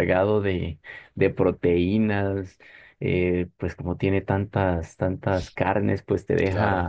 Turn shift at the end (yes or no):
no